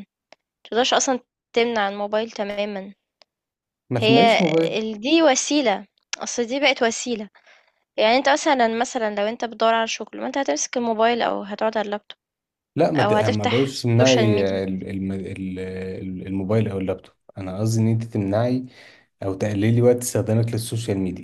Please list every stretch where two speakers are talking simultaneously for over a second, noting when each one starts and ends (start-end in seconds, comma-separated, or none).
13.0-14.6